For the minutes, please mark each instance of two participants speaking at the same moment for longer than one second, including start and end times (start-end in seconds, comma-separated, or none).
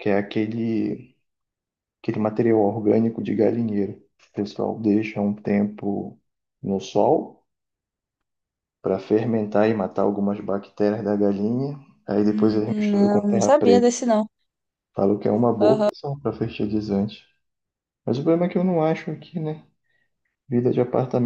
12.7-13.9